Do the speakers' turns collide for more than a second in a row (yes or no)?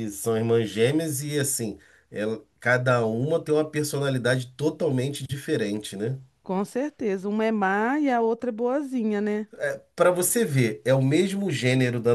no